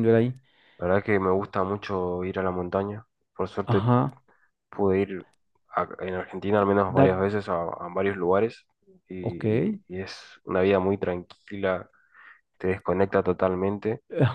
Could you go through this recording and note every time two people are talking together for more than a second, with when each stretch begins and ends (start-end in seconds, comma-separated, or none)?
none